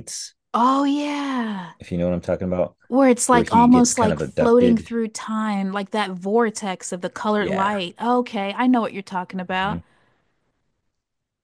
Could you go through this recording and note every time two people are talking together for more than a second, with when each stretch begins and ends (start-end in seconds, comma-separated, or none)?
3.3-4.9